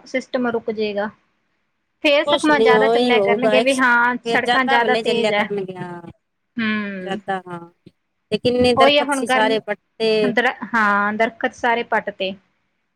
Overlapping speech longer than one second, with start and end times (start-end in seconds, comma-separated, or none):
2.3-5.4, 8.8-10.1